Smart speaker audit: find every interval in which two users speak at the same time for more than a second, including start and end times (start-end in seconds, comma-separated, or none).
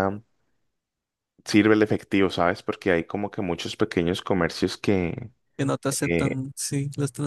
none